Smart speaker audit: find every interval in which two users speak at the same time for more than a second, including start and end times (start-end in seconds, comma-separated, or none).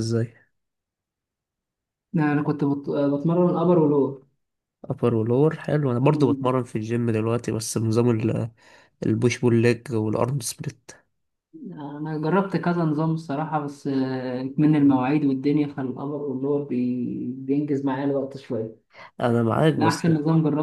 none